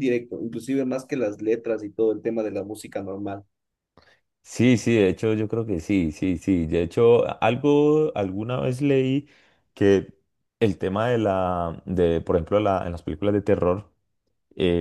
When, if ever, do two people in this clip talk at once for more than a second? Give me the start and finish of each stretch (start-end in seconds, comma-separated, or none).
none